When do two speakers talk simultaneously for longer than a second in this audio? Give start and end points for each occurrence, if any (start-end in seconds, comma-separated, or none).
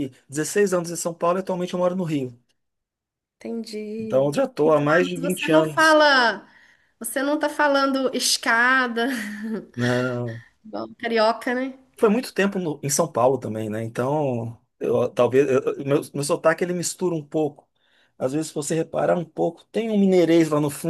4.0-6.0